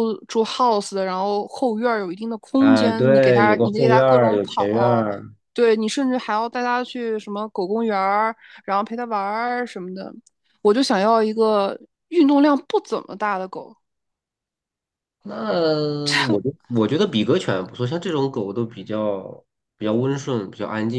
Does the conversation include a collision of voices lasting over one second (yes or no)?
yes